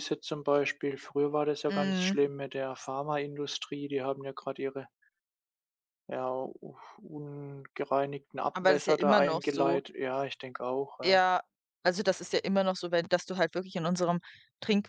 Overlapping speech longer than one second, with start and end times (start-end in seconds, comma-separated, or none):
8.5-9.8